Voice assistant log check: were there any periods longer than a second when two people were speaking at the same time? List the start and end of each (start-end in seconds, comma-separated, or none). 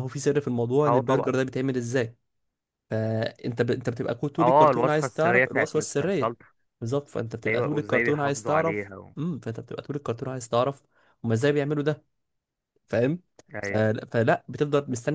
4.4-6.3, 7.5-9.1